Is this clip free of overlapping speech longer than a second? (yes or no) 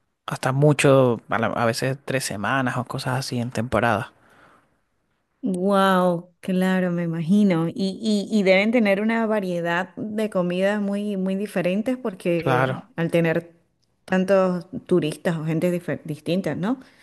yes